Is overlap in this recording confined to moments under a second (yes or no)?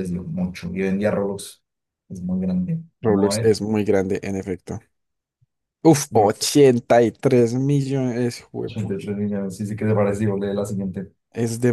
yes